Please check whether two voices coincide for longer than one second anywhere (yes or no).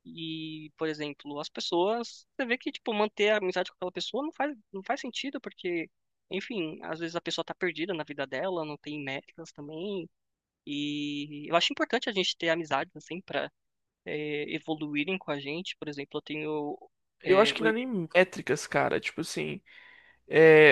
no